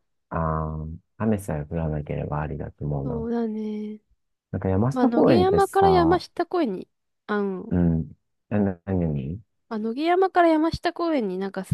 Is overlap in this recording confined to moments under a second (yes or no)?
no